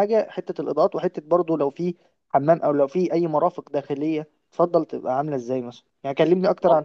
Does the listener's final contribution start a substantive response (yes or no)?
no